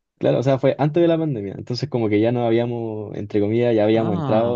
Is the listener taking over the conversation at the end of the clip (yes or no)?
no